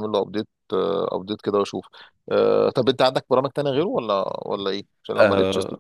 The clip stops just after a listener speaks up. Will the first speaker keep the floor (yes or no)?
no